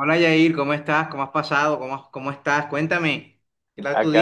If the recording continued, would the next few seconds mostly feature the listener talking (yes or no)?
yes